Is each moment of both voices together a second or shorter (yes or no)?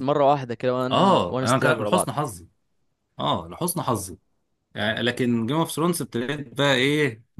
no